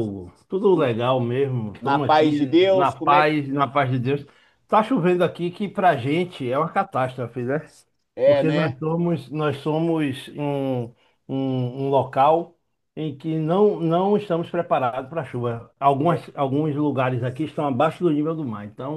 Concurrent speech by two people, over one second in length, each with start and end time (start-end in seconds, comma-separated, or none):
1.8-3.4